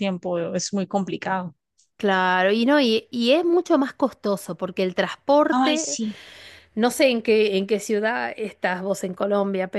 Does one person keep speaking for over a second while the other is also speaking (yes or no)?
no